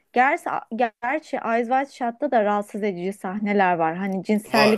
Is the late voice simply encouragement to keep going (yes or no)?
yes